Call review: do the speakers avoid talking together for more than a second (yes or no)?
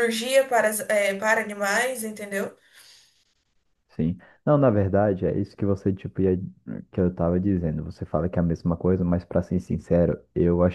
yes